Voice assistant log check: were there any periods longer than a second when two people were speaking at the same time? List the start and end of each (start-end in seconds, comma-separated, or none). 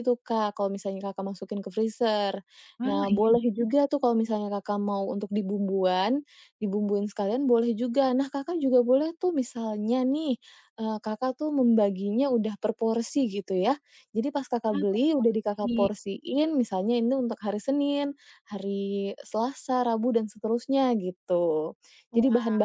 14.7-15.9